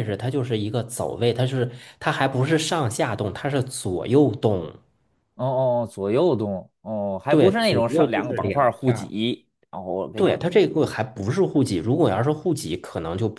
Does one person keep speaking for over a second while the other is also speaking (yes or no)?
yes